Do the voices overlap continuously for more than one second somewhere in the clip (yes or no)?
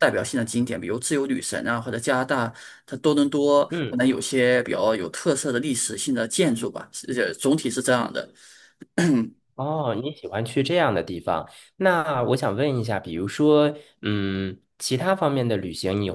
no